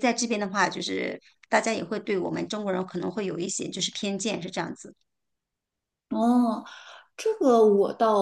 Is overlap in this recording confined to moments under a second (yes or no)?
yes